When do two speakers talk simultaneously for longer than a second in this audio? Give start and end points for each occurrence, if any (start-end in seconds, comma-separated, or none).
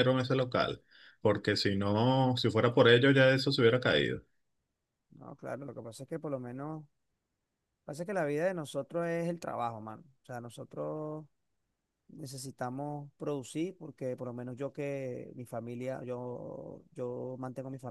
none